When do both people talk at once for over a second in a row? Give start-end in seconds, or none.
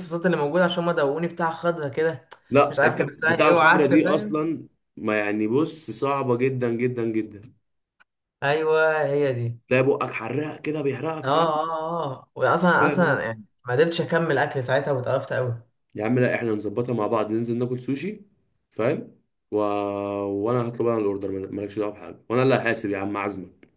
2.7-4.4